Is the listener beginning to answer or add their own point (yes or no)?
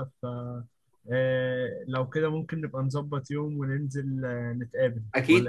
yes